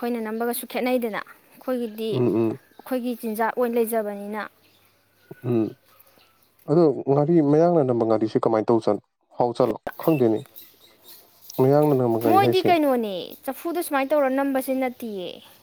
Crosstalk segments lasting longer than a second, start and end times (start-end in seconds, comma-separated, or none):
none